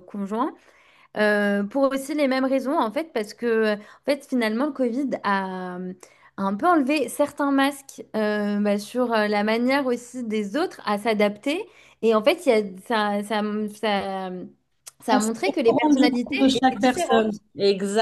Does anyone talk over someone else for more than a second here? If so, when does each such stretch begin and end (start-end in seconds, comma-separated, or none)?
15.1-17.4